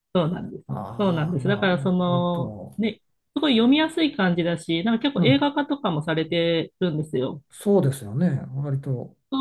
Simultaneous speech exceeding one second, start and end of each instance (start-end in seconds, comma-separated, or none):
0.7-2.8